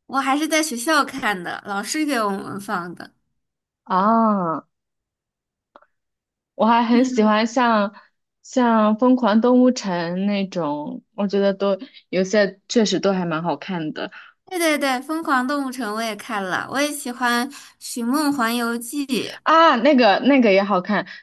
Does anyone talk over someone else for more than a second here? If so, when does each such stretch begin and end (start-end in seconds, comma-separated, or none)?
none